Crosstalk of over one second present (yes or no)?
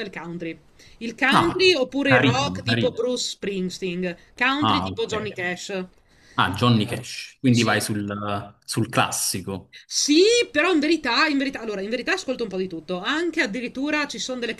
yes